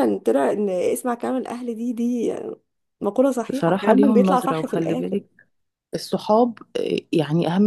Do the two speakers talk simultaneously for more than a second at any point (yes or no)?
yes